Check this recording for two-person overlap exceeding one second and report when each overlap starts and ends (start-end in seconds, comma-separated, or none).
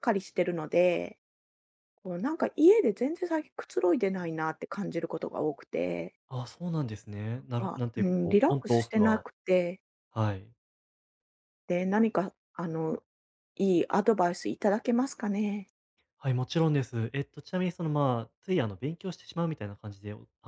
7.6-9.2